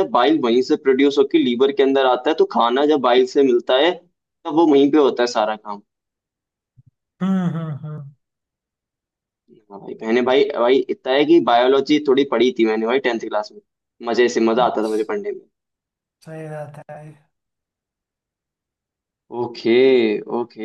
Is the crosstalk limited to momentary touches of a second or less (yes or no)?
yes